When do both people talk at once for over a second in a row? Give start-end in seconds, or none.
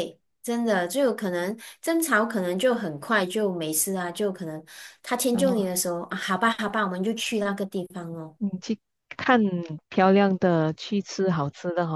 none